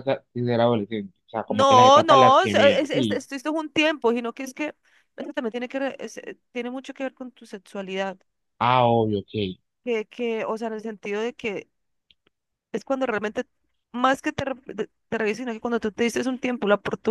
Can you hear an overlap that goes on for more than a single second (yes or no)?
yes